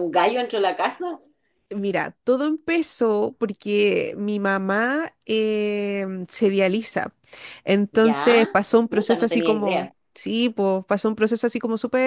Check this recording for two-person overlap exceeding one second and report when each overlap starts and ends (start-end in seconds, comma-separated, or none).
7.9-9.9